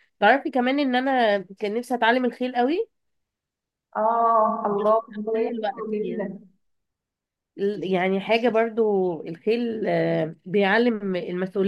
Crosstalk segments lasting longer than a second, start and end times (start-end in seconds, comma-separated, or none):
4.7-6.4